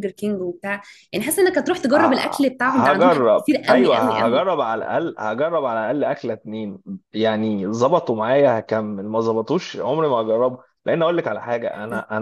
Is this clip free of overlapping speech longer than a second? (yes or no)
no